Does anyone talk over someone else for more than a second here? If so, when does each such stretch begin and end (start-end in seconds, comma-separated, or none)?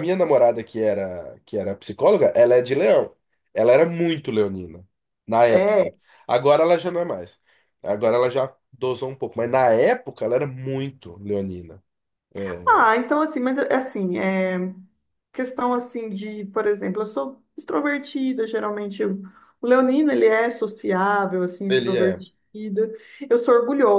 none